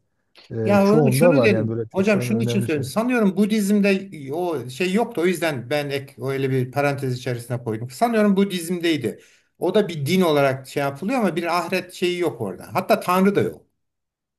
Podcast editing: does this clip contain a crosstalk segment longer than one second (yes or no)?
yes